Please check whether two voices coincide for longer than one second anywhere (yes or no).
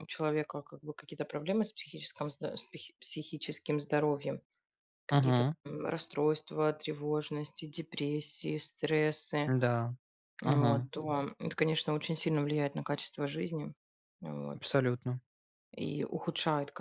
no